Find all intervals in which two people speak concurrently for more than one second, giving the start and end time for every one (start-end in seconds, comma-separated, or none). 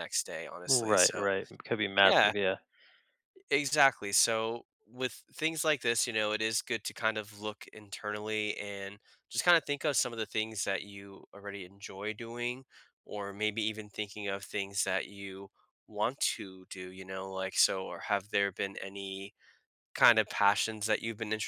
none